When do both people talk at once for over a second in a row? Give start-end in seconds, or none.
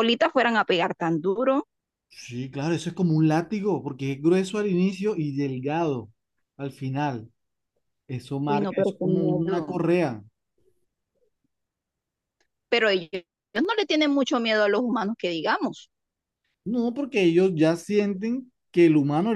8.5-9.8